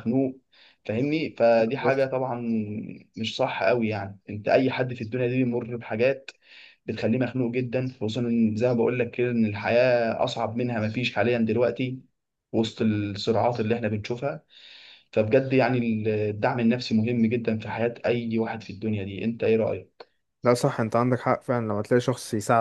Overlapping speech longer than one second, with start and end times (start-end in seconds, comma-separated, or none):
none